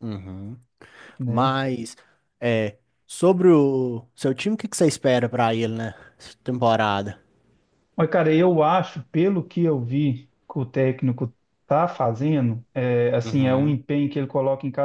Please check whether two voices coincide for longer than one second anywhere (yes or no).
no